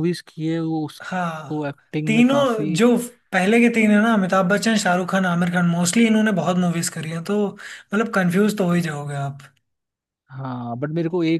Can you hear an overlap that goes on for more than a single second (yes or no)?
yes